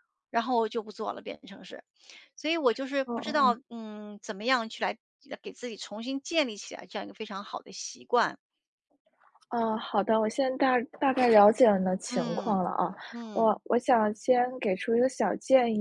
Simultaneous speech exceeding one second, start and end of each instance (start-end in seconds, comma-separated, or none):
none